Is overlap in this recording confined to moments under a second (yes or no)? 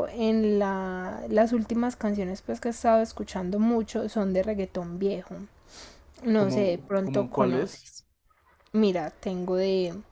no